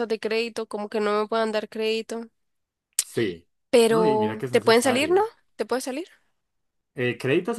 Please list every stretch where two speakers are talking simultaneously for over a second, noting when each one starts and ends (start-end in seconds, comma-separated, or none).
3.9-5.3